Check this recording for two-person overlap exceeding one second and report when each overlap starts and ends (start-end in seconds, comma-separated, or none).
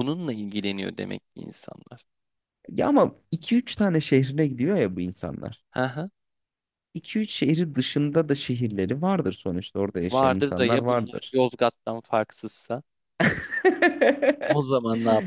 10.1-11.4